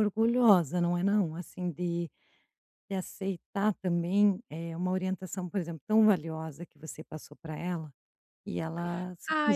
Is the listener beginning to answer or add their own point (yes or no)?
yes